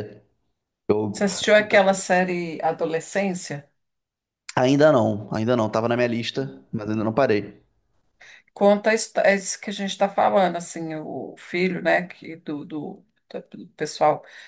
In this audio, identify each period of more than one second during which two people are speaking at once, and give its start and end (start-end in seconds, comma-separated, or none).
none